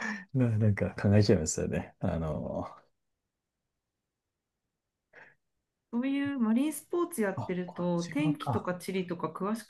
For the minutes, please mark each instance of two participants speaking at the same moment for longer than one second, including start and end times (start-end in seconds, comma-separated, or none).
7.3-8.7